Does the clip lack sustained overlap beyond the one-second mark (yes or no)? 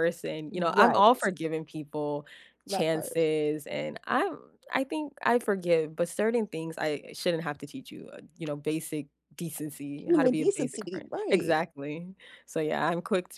no